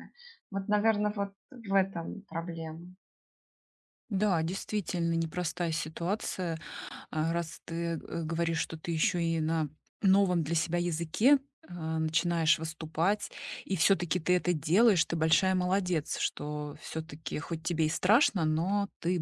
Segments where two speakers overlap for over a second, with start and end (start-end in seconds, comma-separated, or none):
none